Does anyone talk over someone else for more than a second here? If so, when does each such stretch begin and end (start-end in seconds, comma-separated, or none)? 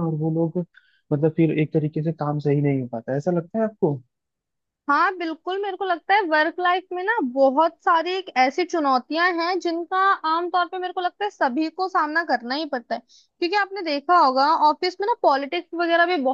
none